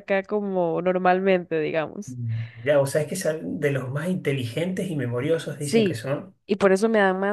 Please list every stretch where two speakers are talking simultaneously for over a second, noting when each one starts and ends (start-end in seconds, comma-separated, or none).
none